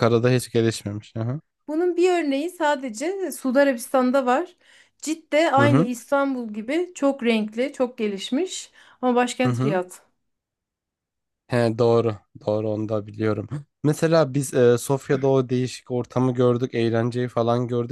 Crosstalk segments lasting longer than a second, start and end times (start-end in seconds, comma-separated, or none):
none